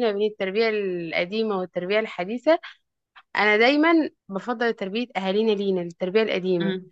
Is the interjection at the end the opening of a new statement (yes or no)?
yes